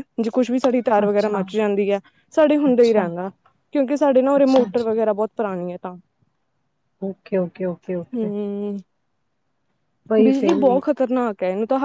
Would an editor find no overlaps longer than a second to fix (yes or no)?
yes